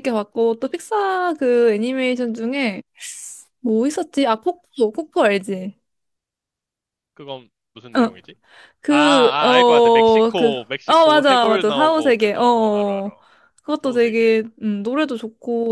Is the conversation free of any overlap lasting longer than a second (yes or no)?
no